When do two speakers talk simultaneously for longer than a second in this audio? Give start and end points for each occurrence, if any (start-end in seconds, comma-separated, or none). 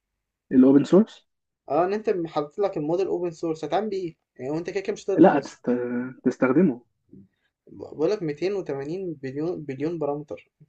none